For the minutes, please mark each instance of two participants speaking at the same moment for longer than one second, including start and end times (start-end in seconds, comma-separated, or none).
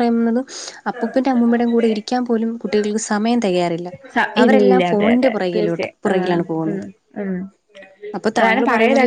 4.4-6.8